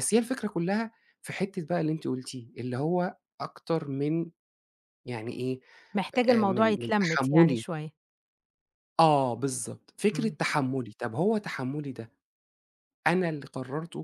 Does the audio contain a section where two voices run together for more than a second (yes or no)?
yes